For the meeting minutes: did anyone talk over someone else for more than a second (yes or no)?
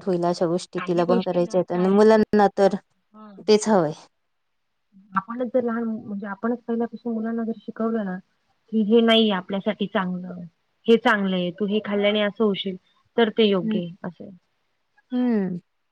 yes